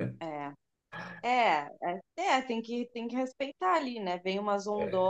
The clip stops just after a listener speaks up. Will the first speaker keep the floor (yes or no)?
yes